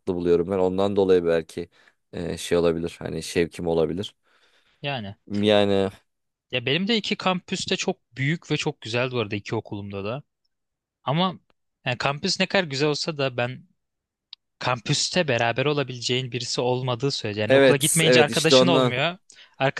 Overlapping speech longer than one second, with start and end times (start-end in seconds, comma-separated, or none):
17.5-18.9